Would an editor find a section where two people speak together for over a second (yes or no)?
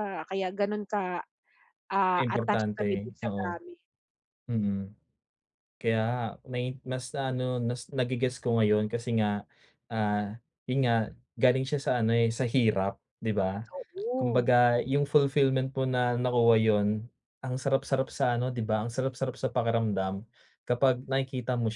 yes